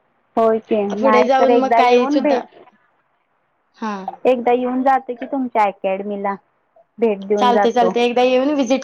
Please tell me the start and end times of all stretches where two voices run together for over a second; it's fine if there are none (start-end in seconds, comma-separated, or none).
1.0-2.5